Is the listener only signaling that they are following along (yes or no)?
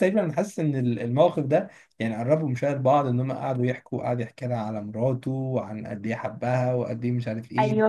no